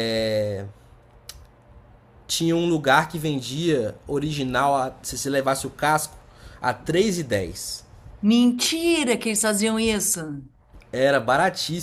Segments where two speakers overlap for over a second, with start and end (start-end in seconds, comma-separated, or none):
none